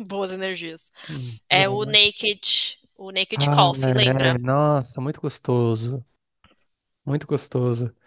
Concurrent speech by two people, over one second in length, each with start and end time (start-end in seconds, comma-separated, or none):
none